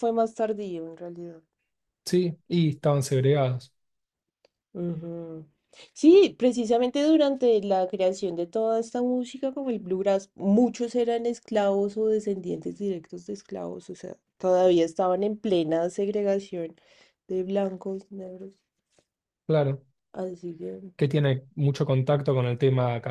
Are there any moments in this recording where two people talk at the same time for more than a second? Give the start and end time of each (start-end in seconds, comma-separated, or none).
none